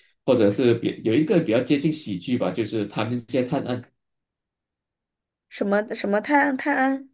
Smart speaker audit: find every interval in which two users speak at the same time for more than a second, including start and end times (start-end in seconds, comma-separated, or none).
none